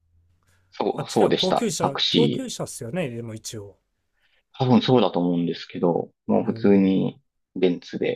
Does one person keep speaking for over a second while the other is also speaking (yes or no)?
yes